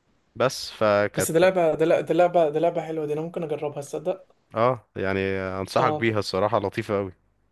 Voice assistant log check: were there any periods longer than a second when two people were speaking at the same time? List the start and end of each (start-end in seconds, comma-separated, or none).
none